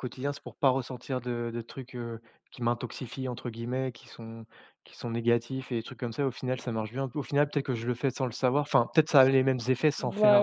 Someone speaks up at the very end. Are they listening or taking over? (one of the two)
taking over